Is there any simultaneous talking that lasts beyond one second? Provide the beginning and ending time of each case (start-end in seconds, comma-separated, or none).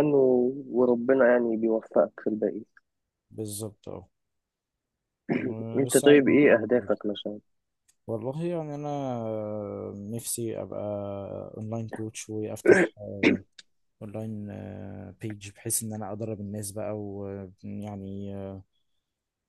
5.8-7.0